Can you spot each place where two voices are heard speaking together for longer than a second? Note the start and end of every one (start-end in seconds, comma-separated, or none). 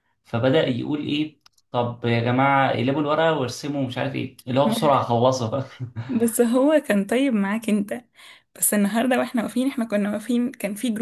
none